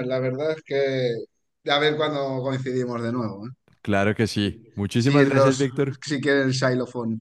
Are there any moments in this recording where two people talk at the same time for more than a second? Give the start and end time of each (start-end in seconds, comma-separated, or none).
4.3-5.7